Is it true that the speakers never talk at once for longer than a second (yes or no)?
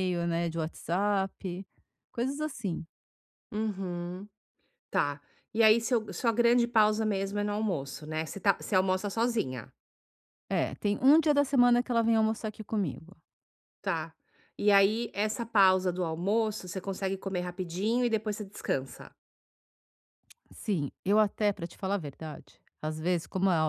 yes